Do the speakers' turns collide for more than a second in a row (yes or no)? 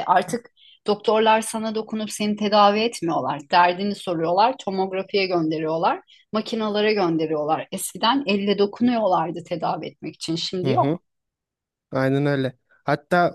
no